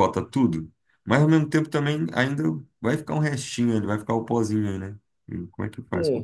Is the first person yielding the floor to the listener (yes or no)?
yes